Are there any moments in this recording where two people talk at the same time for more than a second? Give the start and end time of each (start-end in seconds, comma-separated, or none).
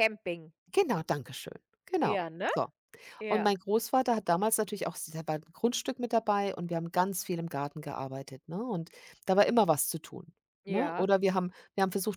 none